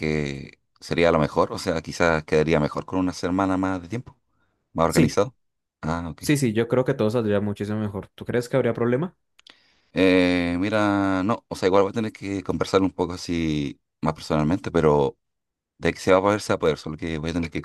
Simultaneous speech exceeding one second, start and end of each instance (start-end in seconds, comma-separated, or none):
none